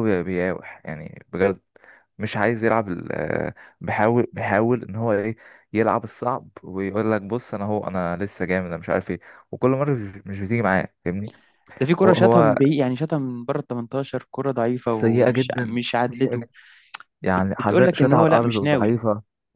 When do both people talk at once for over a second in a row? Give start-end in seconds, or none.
14.9-16.4, 17.3-19.0